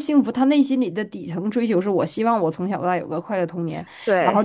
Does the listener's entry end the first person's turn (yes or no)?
no